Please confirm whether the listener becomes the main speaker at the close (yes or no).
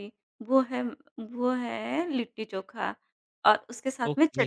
no